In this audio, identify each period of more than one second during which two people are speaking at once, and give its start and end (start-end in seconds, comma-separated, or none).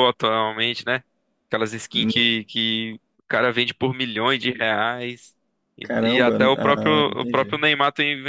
5.8-7.5